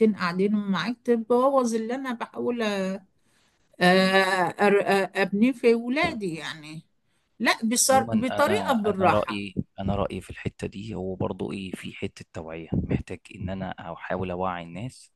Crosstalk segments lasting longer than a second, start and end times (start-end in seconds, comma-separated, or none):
7.9-9.4